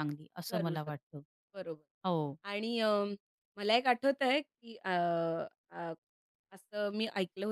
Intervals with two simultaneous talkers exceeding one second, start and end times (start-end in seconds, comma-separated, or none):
none